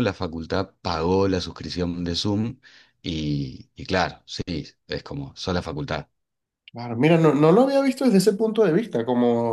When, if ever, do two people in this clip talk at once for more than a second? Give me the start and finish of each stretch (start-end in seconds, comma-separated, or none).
none